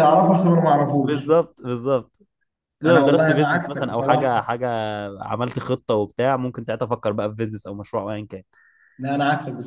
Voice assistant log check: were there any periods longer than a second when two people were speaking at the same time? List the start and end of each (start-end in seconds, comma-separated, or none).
2.9-4.5